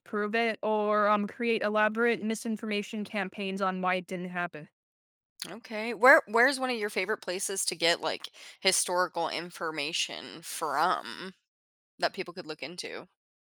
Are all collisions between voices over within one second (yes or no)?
yes